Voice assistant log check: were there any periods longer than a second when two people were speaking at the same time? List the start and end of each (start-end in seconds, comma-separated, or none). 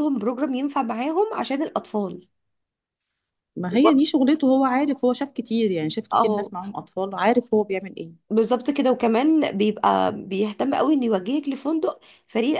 none